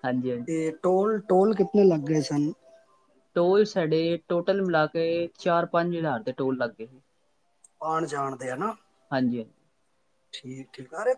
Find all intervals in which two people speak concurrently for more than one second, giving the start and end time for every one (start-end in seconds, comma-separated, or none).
none